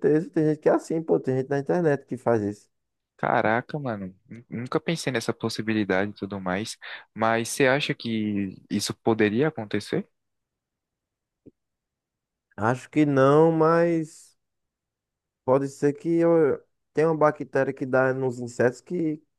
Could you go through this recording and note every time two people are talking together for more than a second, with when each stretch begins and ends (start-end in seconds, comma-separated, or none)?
none